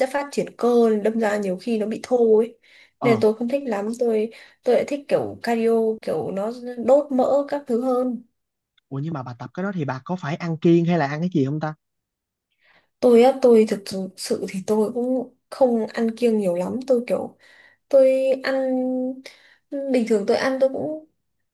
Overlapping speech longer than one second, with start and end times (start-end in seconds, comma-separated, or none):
none